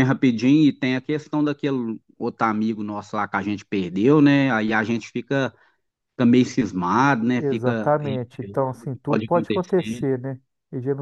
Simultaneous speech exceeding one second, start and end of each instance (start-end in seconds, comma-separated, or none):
7.4-10.0